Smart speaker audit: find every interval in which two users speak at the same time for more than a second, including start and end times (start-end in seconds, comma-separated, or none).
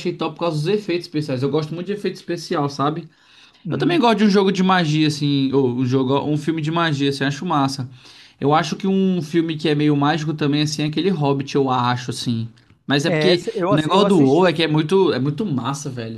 13.0-14.6